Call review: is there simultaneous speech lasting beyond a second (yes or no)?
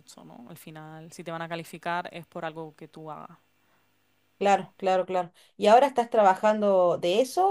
no